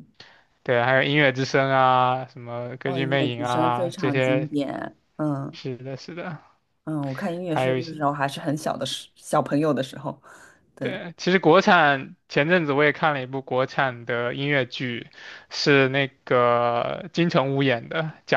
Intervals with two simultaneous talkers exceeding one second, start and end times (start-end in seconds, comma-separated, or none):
2.8-4.5